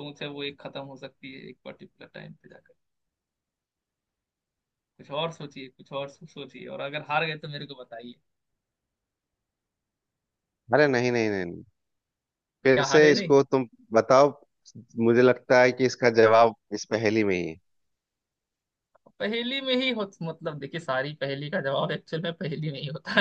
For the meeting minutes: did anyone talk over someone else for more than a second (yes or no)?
no